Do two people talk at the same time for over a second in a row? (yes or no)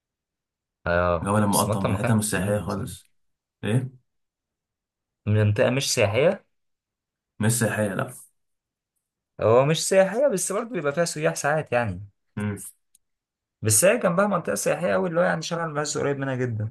yes